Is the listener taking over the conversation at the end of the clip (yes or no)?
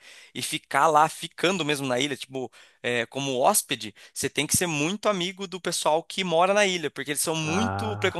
no